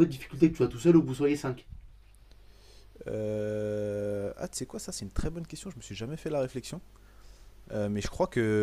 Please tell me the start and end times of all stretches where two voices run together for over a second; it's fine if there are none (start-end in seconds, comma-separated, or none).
none